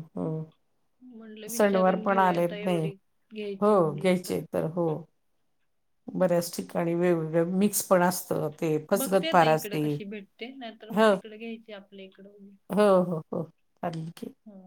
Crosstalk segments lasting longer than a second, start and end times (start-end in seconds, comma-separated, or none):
1.0-2.8